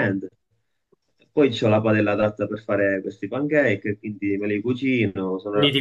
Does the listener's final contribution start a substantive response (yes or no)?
yes